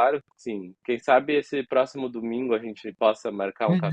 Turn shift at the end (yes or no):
yes